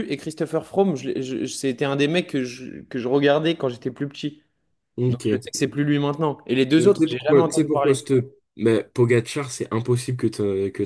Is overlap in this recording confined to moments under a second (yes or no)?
no